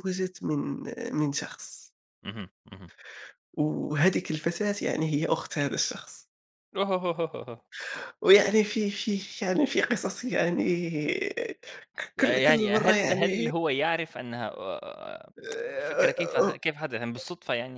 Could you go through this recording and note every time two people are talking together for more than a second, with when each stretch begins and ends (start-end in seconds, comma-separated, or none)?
12.2-13.5